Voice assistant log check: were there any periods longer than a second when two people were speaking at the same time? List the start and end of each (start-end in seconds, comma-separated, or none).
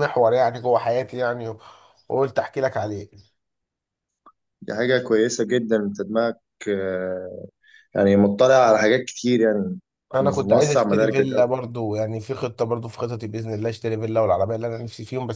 10.2-11.5